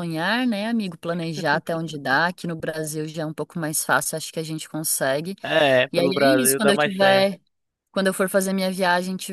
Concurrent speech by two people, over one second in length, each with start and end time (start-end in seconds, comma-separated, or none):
5.9-7.3